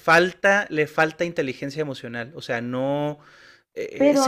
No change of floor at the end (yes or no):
no